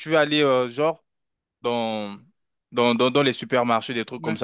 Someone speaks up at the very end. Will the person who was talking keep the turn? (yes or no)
yes